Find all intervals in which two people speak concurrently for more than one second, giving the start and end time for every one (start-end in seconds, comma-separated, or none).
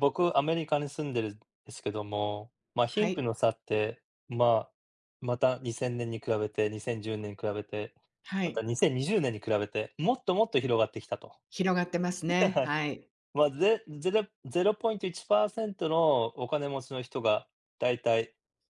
none